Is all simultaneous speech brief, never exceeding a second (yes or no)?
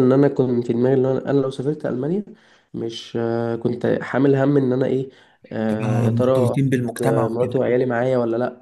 no